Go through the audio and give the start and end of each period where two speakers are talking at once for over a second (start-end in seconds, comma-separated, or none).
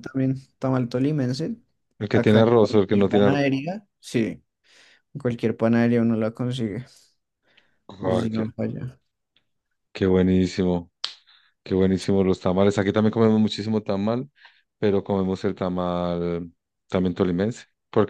2.1-3.4